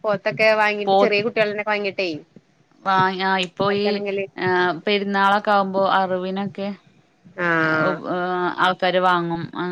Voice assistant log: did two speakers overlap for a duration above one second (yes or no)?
no